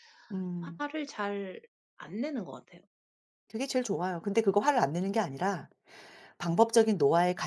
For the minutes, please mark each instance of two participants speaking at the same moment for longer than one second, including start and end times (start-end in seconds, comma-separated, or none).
none